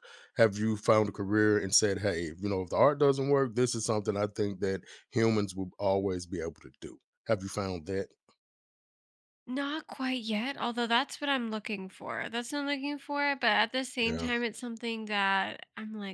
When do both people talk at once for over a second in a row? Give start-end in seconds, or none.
none